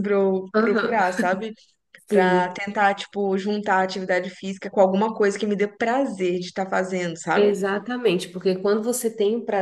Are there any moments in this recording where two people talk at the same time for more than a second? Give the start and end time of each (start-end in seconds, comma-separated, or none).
none